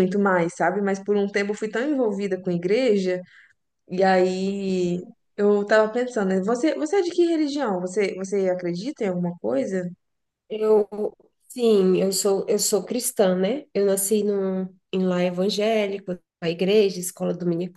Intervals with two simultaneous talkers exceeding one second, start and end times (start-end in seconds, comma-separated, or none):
none